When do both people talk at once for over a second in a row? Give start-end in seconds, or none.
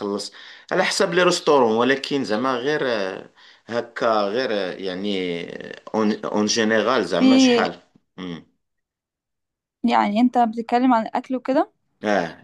none